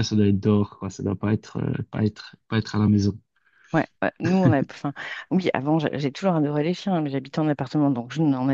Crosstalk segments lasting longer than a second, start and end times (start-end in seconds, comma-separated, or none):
none